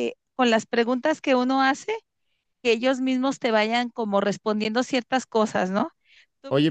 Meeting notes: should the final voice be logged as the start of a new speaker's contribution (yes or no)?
yes